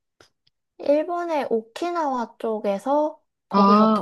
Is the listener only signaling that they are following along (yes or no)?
yes